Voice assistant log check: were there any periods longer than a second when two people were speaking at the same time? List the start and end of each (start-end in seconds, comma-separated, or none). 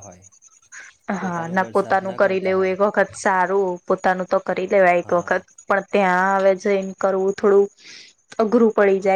1.2-2.8